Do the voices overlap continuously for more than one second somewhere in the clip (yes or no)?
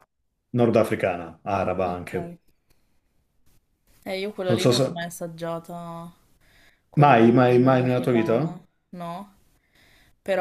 yes